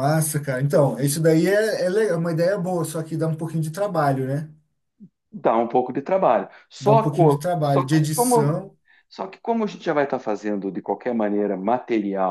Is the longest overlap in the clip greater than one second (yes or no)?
yes